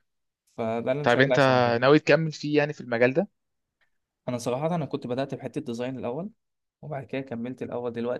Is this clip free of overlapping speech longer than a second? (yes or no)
yes